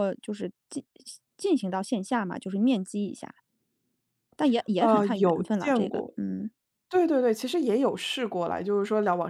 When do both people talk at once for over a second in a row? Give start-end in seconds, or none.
4.8-6.1